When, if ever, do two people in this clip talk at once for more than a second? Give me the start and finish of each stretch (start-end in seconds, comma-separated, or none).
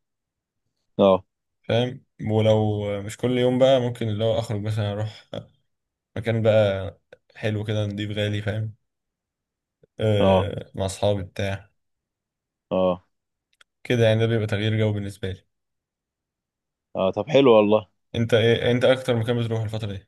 none